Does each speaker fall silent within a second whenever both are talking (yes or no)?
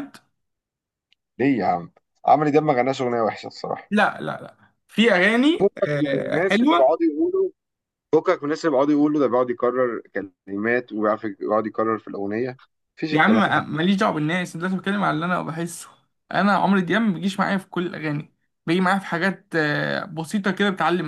no